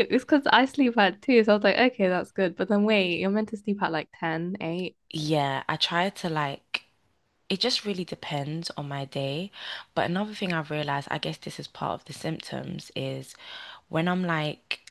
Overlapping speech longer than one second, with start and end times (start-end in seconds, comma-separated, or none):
none